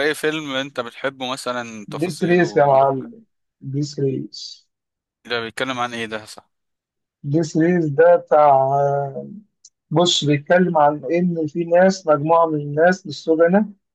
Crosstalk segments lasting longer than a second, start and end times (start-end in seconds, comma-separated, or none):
1.9-3.1